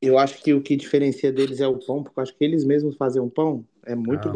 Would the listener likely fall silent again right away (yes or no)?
no